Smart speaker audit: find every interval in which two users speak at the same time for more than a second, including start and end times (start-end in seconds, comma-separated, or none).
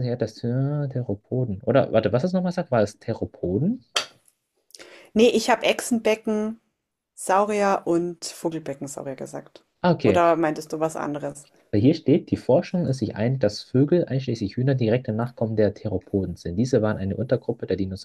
none